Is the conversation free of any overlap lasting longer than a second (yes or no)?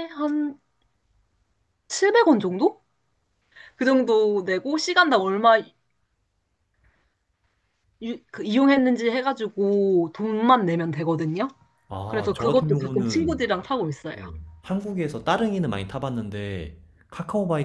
no